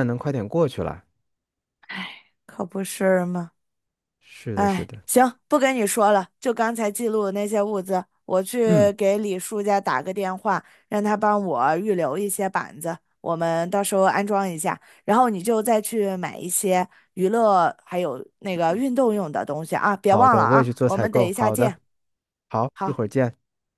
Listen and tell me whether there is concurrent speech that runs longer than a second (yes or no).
yes